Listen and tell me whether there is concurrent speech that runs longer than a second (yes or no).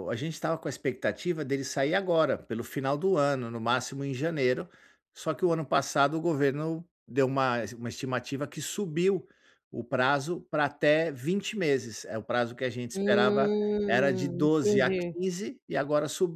yes